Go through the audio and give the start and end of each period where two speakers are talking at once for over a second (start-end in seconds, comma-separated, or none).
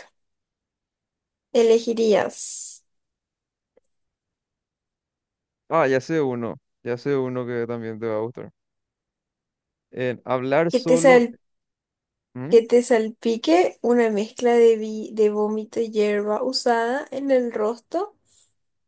none